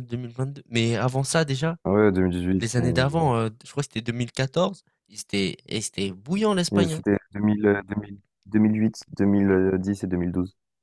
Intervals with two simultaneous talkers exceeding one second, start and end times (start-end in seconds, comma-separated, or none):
none